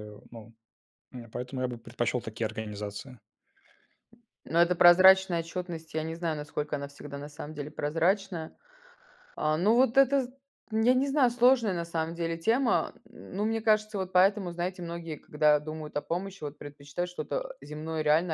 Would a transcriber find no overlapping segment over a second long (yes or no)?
yes